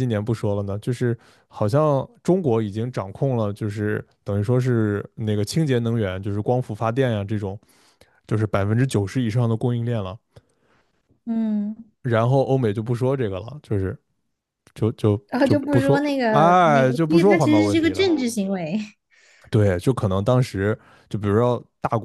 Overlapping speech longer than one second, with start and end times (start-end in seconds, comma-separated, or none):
15.3-18.1